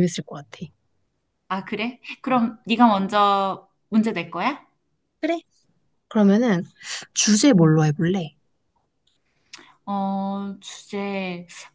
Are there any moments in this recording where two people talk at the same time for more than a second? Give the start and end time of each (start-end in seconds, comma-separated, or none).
none